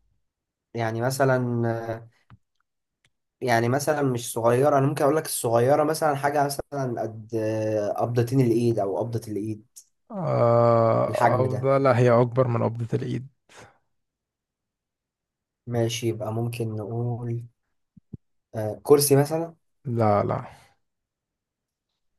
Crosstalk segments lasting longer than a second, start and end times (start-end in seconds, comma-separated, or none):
none